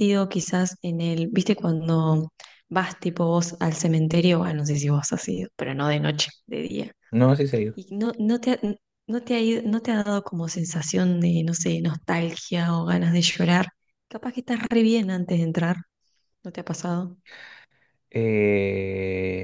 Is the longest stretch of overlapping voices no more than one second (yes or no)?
yes